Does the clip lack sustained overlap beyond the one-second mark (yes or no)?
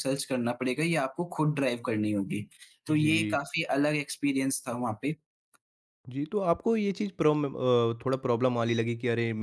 yes